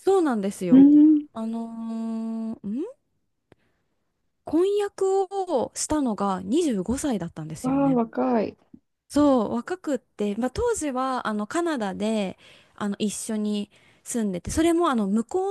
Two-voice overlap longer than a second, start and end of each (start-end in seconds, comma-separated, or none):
none